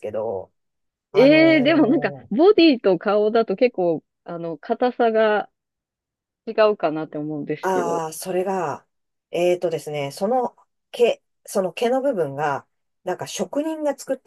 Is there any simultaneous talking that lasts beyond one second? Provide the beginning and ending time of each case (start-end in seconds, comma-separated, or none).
1.1-2.5